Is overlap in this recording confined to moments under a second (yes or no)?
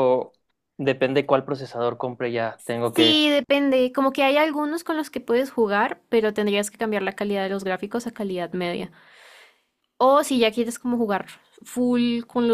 yes